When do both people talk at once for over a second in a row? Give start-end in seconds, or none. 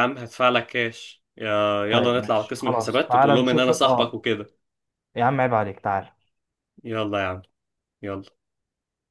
1.9-4.2